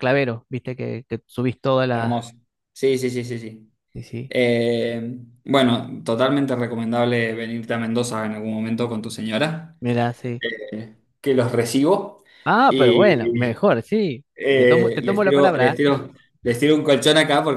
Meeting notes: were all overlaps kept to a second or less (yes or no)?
no